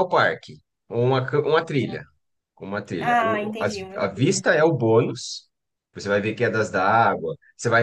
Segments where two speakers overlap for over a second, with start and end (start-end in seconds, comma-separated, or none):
3.0-4.5